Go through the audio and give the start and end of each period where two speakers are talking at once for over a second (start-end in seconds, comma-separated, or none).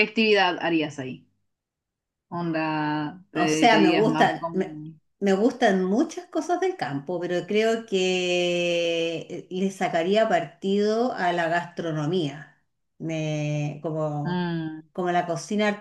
3.3-4.8